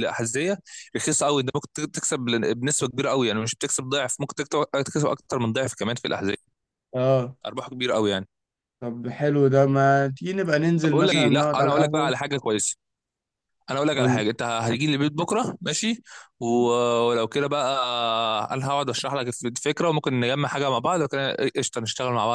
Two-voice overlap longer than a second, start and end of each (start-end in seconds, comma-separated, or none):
10.8-12.1